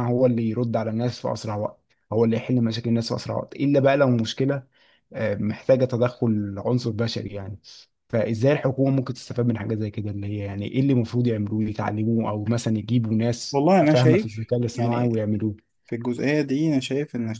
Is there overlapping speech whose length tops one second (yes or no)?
yes